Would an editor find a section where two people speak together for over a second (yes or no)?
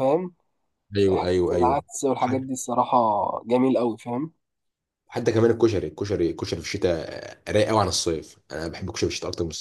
yes